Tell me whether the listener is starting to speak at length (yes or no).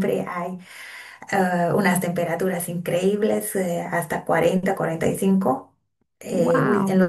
no